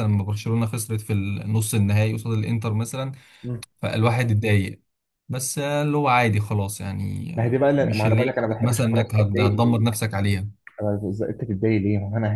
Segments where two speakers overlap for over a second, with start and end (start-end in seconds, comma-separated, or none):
7.4-9.9